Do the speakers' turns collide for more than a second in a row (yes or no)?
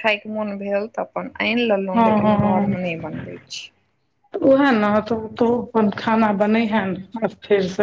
no